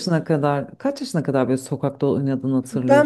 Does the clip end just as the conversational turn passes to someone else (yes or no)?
yes